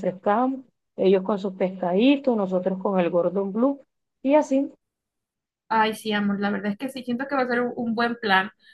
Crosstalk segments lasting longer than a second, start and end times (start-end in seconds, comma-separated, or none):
none